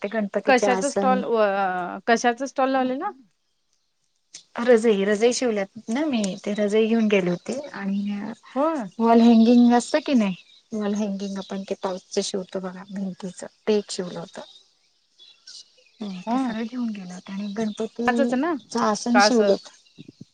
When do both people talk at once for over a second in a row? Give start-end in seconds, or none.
none